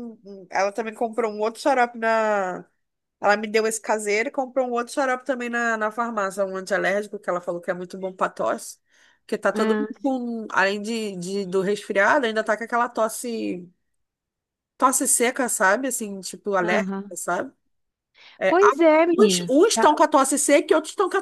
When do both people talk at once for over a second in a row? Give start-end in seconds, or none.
18.5-20.0